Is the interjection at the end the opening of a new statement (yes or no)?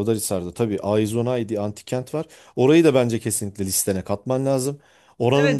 yes